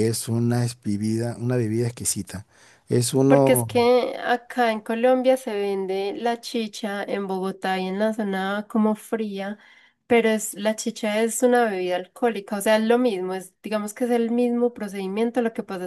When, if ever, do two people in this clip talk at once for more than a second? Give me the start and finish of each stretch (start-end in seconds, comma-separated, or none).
none